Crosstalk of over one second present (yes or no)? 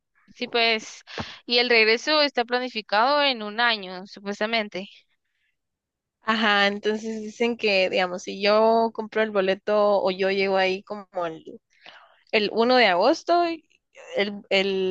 no